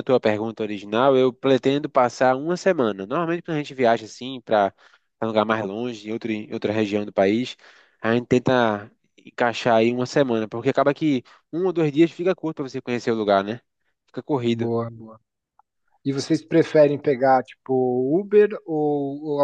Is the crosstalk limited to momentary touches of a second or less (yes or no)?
yes